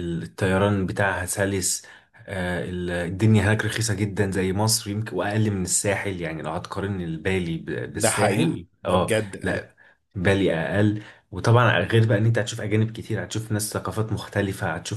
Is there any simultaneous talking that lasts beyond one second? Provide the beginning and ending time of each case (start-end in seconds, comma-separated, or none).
7.9-9.7